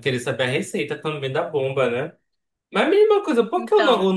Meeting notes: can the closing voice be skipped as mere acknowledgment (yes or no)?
yes